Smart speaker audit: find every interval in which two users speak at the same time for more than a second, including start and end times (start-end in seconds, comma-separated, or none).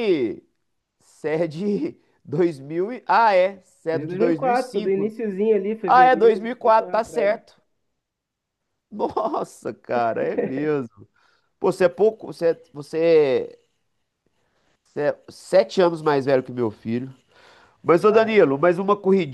3.9-5.1, 5.9-7.4